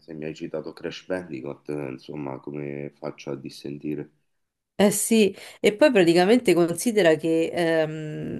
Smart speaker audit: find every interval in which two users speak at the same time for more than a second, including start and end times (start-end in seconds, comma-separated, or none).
none